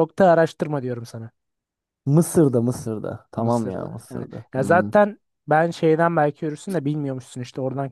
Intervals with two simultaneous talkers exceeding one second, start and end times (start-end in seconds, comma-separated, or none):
3.4-4.9